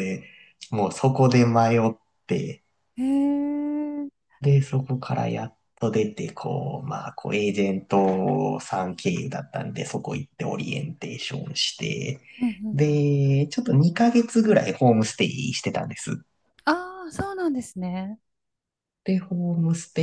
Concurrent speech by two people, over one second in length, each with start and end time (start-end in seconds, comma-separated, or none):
none